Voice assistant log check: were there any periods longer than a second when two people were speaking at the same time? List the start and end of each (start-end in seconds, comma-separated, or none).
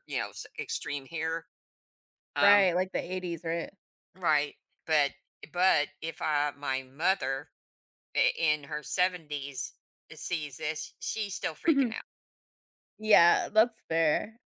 none